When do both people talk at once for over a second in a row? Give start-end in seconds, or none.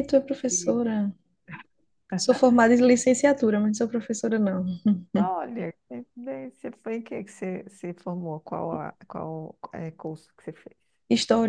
none